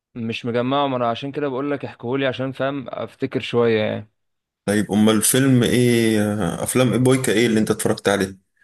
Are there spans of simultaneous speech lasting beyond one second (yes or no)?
no